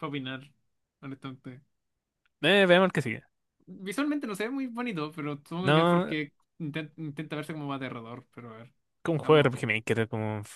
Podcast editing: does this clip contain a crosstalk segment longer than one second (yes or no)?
no